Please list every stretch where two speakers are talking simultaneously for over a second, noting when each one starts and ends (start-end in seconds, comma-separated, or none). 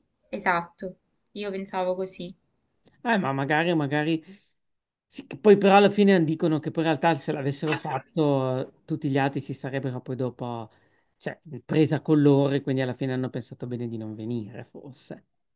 none